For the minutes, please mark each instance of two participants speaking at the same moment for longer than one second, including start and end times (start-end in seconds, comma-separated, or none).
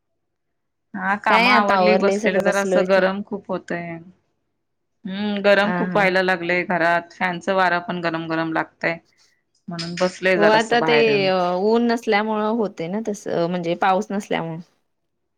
1.8-3.0